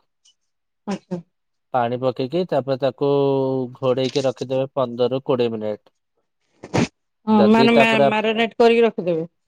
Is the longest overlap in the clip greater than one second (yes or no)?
no